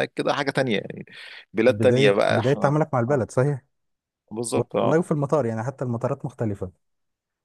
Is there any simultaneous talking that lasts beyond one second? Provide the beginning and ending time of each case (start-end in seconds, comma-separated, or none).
1.7-3.3